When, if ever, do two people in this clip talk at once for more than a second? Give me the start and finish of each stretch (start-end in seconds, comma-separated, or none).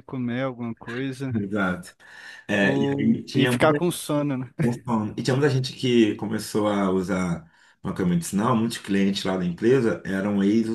2.6-3.8